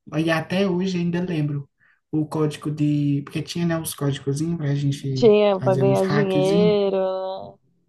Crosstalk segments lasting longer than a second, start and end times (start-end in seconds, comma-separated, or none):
5.1-6.8